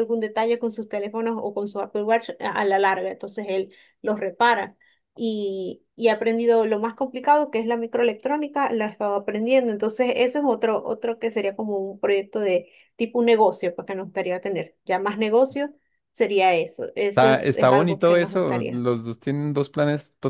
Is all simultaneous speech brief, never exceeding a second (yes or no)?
no